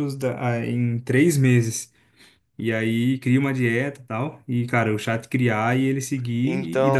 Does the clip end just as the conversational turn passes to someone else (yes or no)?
no